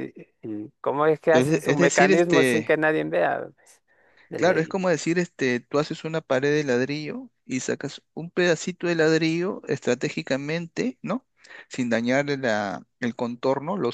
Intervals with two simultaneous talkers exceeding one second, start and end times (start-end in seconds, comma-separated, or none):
1.3-2.7